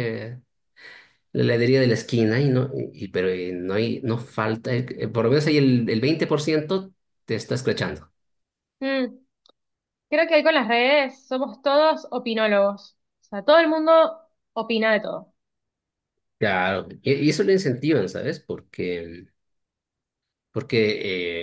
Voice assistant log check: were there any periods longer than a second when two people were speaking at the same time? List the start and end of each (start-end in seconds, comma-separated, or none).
none